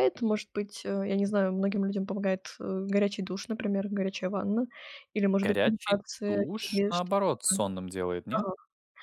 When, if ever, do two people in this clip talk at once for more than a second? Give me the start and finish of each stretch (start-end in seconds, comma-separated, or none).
5.4-7.7